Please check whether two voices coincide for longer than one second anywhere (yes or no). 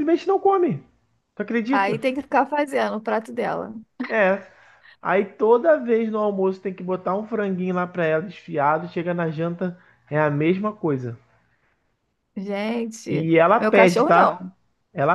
yes